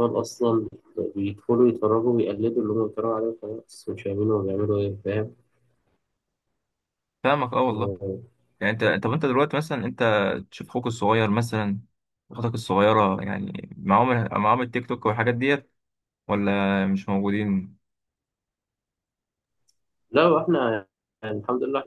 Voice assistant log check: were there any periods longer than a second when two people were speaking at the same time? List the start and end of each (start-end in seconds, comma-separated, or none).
none